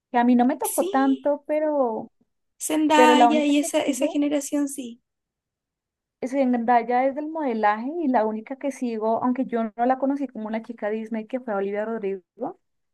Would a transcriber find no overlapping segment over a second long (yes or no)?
no